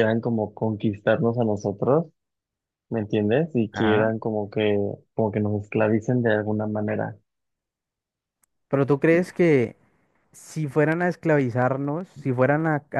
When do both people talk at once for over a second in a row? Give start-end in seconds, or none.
none